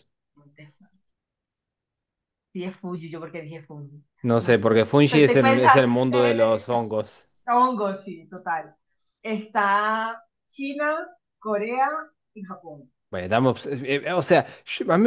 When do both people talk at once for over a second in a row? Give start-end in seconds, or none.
4.4-6.7